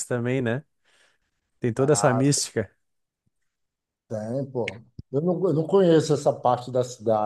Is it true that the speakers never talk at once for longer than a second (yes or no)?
yes